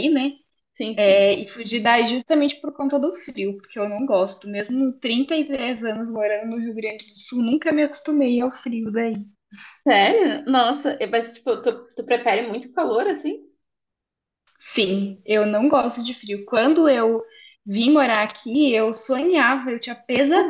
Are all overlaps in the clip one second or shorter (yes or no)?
yes